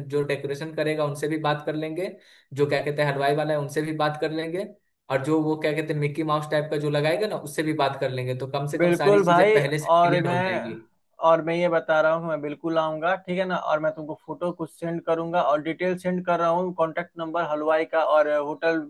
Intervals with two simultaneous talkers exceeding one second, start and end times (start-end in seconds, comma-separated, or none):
8.8-10.8